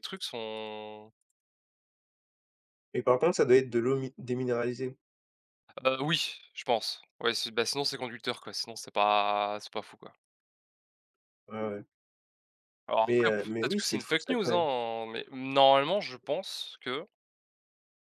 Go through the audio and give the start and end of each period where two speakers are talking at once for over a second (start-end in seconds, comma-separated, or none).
13.0-14.7